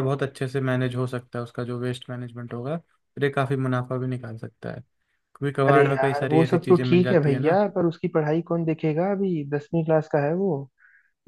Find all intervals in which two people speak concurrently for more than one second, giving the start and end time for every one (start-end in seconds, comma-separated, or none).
5.7-7.6